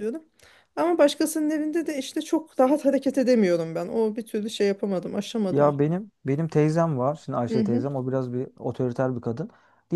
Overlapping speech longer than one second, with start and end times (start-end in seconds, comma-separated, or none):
none